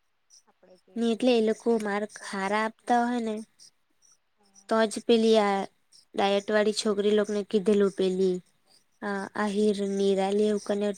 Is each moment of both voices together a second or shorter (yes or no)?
no